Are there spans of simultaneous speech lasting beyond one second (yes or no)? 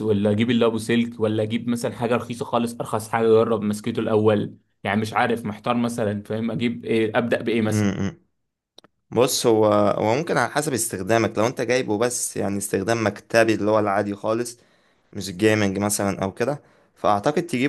no